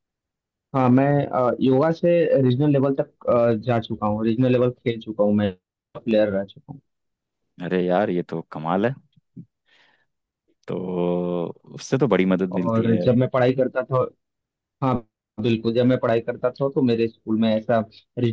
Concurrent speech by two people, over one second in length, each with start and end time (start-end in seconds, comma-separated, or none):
none